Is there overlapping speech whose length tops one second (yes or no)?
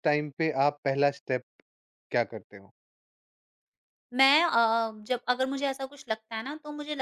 no